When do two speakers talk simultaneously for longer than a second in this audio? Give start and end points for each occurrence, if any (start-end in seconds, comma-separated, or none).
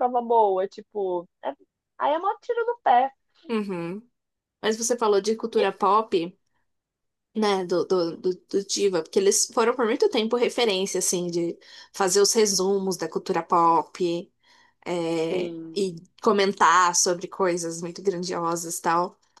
none